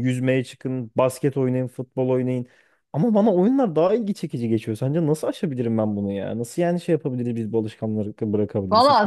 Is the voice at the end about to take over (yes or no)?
yes